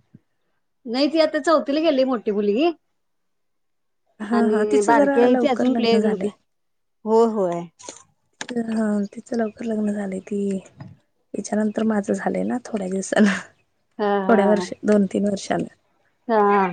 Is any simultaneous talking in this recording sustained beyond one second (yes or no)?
yes